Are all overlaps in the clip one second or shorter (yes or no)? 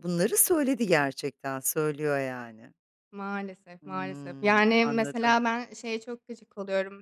no